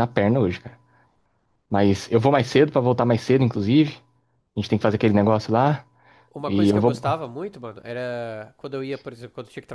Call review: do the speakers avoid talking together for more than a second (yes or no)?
yes